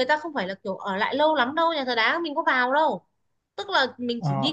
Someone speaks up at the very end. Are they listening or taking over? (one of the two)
taking over